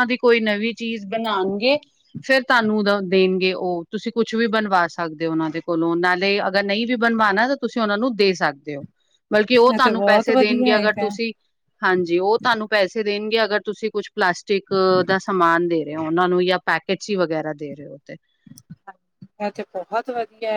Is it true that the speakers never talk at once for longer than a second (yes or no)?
no